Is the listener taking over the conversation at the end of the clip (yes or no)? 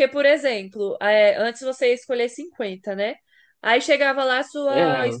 no